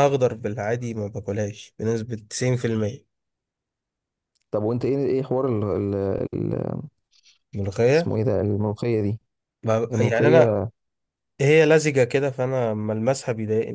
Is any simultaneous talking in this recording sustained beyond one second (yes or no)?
no